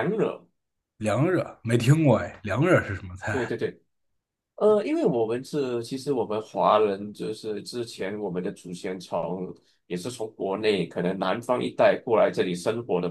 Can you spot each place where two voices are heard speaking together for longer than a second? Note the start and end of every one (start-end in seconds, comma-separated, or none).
none